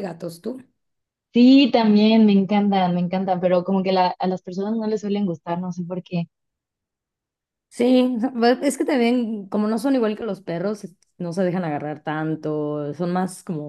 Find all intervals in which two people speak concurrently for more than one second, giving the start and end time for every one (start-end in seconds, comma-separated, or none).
none